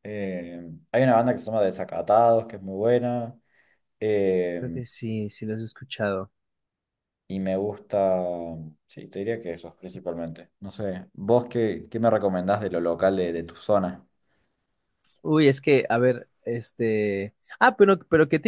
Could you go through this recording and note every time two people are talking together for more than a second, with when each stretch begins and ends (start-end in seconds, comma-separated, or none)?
none